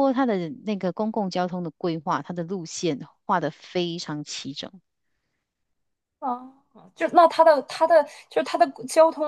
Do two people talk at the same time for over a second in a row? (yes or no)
no